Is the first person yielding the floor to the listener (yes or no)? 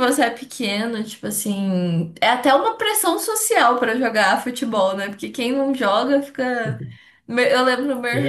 no